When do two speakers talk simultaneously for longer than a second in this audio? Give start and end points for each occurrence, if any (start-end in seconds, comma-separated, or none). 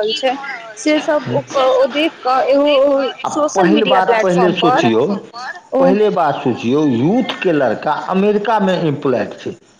none